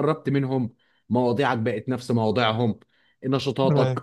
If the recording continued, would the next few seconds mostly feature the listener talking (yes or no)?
no